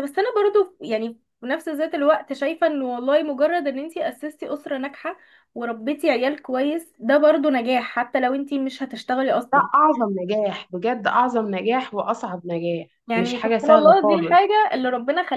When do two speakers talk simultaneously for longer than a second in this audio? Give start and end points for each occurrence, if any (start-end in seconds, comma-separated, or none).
13.1-14.4